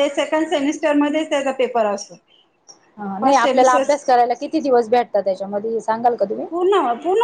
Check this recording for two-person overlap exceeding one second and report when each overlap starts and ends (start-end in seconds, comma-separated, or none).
none